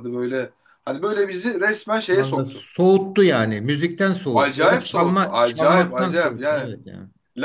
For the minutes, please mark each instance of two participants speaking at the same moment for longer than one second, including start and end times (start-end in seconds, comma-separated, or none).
4.3-6.7